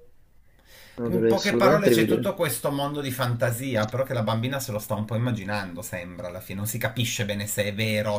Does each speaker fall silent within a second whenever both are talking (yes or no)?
no